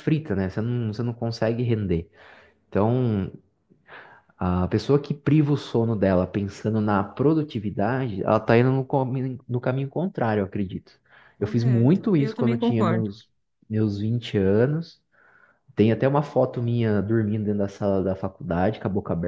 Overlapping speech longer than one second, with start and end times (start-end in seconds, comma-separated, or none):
11.4-13.1